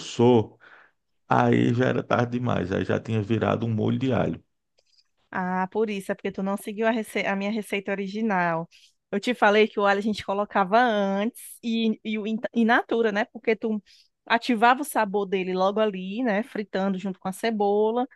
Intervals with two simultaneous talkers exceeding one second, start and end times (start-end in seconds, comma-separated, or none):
none